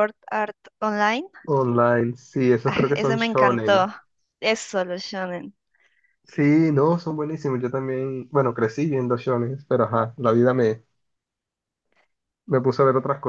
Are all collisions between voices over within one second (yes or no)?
no